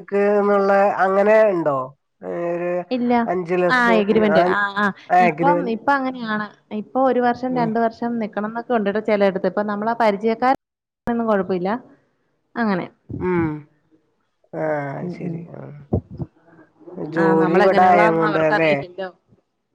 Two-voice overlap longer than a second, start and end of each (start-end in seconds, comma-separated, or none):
17.2-18.7